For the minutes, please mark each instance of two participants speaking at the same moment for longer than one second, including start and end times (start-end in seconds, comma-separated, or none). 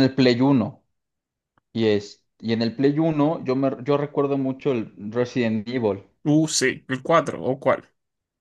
none